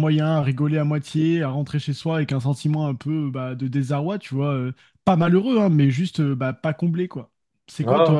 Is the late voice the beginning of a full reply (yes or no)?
no